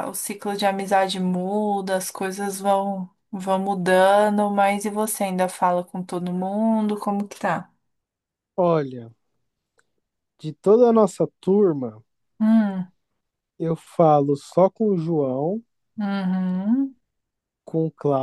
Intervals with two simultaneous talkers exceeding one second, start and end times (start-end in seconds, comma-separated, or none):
none